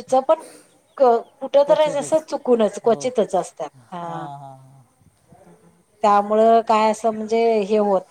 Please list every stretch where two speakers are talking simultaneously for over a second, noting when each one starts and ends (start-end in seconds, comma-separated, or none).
none